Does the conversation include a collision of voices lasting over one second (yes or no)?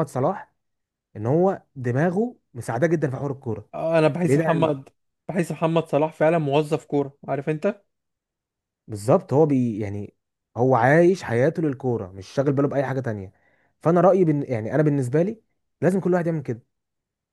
no